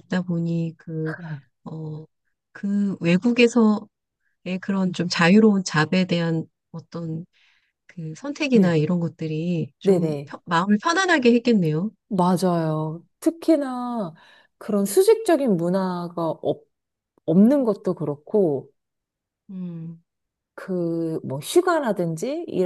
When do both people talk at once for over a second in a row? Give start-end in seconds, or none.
none